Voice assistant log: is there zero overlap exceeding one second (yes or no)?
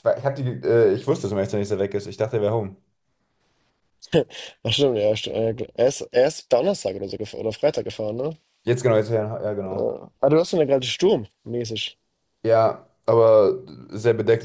yes